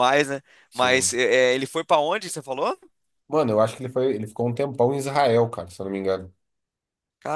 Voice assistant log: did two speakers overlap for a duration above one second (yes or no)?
no